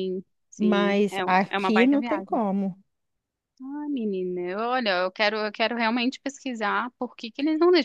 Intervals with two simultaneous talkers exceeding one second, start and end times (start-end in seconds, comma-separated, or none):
0.6-2.4